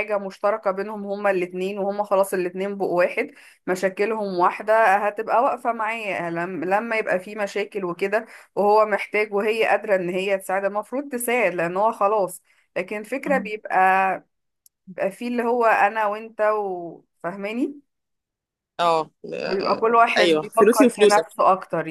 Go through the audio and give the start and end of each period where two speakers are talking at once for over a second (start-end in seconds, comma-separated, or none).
19.5-21.3